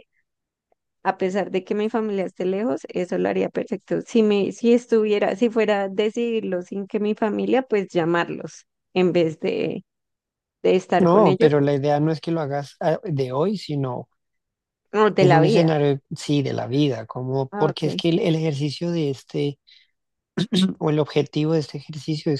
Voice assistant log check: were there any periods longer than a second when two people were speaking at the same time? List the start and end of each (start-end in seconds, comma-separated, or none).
none